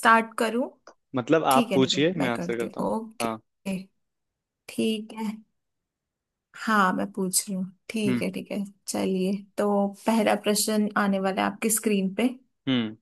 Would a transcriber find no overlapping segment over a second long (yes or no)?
no